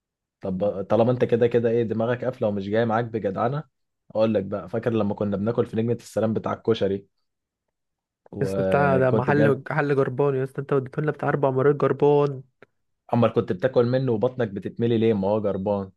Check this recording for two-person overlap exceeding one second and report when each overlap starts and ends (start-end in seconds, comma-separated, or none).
8.4-9.6